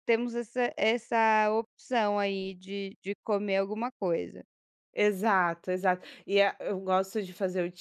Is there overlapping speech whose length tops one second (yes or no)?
no